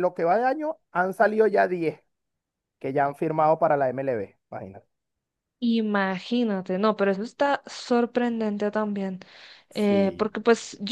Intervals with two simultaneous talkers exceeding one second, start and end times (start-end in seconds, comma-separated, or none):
none